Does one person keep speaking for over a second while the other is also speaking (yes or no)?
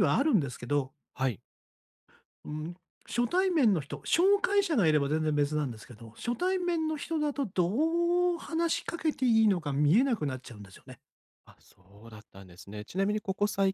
no